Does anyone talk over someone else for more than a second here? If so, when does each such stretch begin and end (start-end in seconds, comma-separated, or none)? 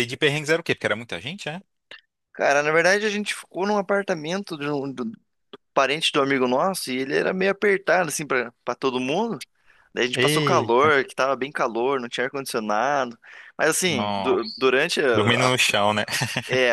none